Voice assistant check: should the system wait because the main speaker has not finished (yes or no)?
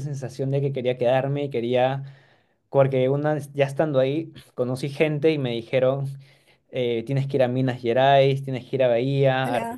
yes